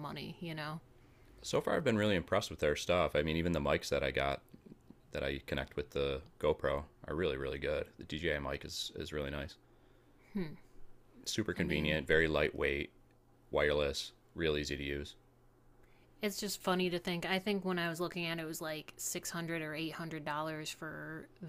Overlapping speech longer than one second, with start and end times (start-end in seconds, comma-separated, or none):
none